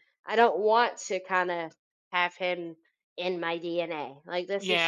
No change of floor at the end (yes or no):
no